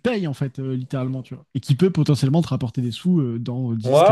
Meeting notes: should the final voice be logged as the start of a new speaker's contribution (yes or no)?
yes